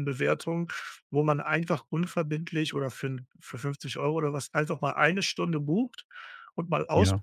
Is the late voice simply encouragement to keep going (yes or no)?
yes